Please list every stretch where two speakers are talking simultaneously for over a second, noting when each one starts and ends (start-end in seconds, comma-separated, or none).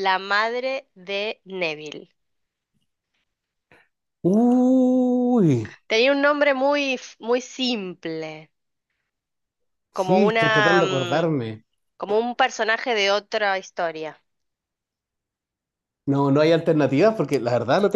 9.9-11.3